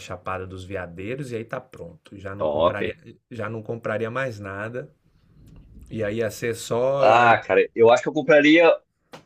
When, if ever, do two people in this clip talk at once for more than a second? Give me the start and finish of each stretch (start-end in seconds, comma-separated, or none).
none